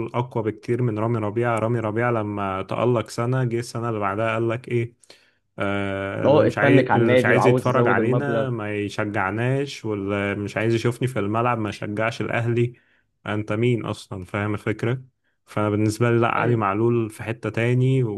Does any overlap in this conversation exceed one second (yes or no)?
yes